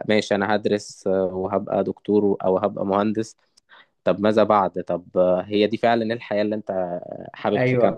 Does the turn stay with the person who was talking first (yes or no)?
no